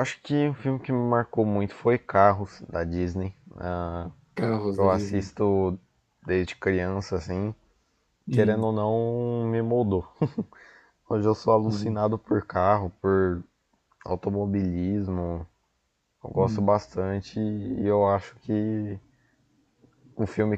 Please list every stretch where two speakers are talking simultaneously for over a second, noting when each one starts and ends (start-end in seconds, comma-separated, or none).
none